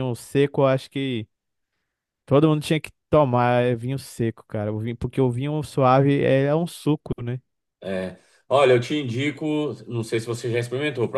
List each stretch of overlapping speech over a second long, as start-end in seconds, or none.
none